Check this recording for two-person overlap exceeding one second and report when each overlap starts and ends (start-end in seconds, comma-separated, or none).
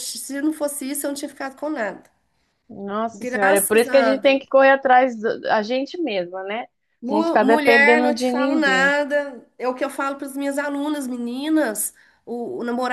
3.1-4.4, 7.1-9.0